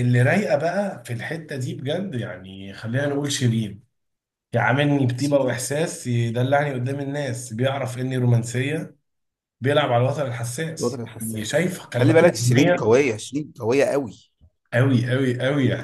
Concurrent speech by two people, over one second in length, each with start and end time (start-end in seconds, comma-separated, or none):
10.8-13.0